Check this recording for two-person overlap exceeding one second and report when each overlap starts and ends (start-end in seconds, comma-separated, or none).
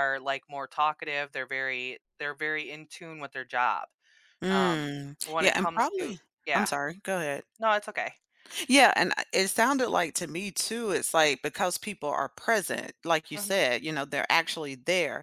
4.5-6.7